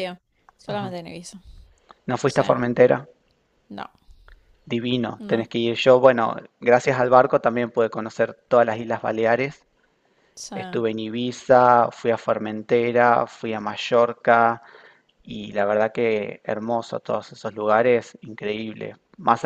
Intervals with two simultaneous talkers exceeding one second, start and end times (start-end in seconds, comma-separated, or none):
none